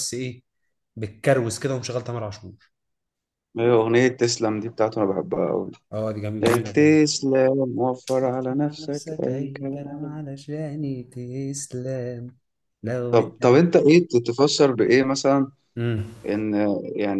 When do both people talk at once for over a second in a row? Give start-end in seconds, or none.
8.1-10.2